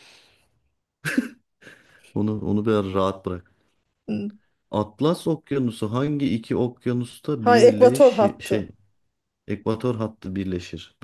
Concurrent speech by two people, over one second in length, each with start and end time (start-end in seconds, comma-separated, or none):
7.4-8.7